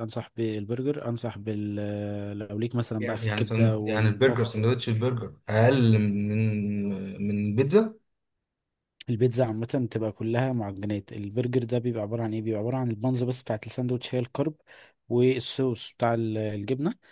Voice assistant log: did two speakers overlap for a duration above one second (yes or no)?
yes